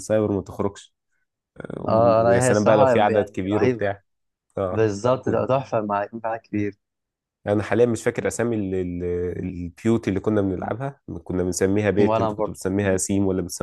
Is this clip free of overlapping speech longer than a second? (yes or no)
no